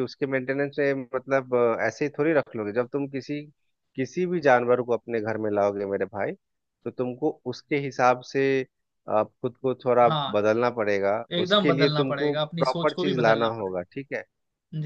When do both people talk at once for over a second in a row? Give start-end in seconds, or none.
11.3-13.8